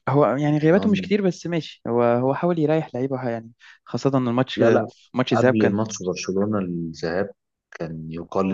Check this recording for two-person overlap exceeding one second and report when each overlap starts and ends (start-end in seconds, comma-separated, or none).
none